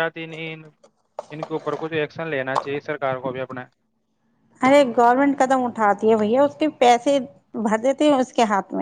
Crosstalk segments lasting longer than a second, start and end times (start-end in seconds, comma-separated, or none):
none